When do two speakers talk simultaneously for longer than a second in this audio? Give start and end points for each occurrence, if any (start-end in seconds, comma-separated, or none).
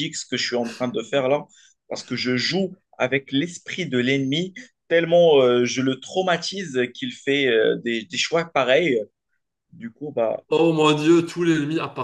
none